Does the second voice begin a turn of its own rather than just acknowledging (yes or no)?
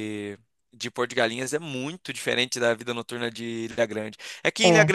no